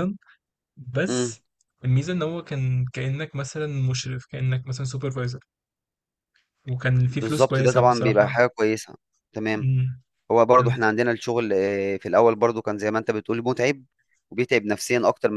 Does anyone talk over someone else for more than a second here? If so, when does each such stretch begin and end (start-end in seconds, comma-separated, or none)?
7.1-8.4